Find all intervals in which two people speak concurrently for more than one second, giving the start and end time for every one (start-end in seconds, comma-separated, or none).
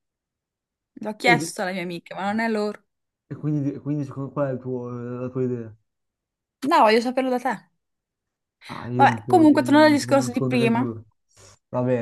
8.9-10.8